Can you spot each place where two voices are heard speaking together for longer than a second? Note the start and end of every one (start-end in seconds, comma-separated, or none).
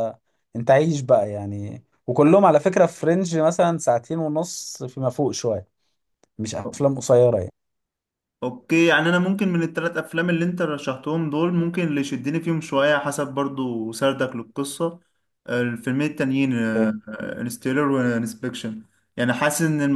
none